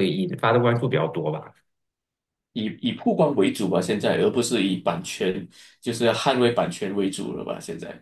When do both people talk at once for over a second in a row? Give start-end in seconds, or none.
none